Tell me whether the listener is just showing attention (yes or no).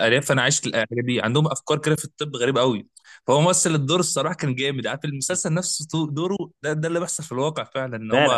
yes